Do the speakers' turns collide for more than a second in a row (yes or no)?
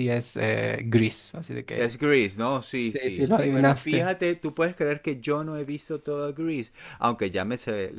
yes